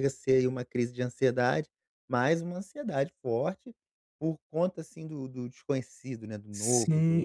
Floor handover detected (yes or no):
yes